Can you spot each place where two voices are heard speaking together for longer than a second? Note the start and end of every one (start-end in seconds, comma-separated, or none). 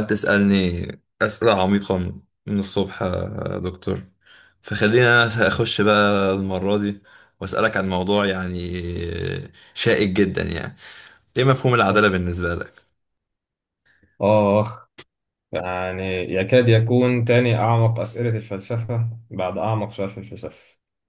none